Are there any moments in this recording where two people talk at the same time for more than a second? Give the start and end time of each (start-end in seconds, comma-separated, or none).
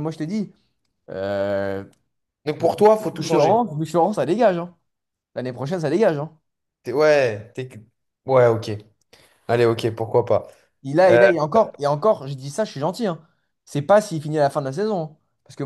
none